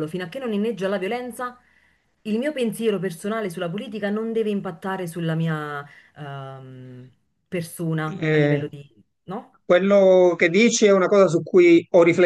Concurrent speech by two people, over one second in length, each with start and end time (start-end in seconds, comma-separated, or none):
none